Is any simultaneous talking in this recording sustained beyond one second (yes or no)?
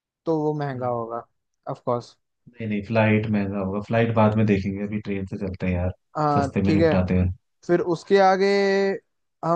no